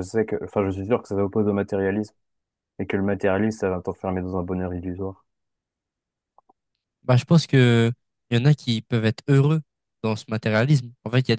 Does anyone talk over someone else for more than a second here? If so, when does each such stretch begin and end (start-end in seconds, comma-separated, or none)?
none